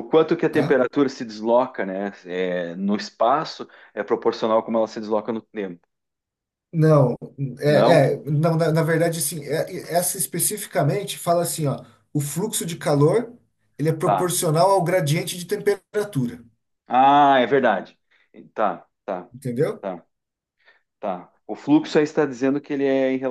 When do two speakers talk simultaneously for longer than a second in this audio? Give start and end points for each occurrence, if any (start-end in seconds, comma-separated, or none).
none